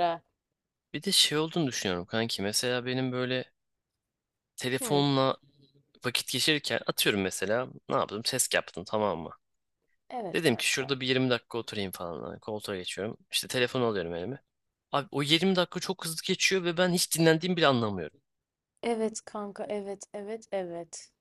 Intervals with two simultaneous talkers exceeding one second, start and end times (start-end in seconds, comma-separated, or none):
none